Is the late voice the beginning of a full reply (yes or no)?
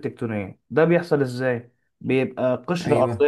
no